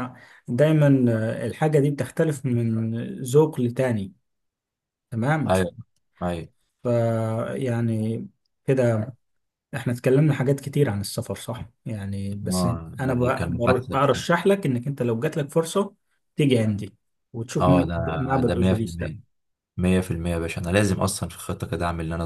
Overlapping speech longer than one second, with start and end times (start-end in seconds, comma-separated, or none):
12.5-14.3, 17.6-19.1